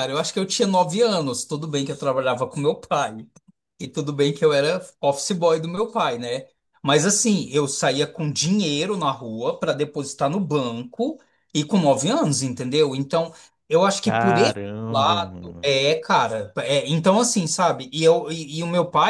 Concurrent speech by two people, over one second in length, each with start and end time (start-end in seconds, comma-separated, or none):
14.0-15.7